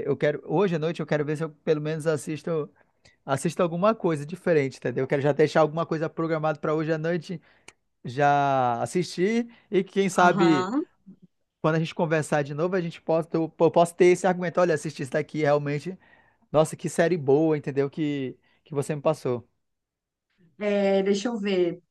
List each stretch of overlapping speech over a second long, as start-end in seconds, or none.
none